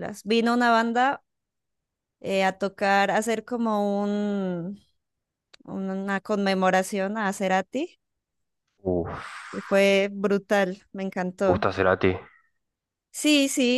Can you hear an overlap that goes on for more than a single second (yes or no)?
no